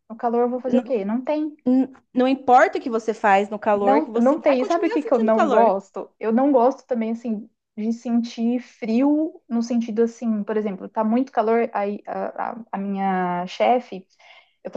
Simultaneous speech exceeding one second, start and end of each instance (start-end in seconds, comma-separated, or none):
3.8-5.7